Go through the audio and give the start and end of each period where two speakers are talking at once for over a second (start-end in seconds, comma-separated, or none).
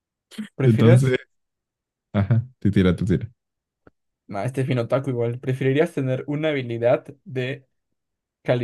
none